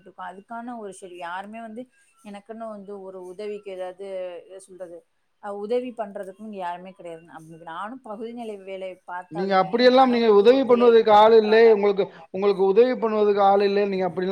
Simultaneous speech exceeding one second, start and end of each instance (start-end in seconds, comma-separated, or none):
9.4-11.6